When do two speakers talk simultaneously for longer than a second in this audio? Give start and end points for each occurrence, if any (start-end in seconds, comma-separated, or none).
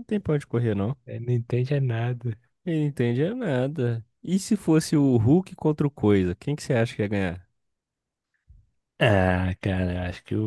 none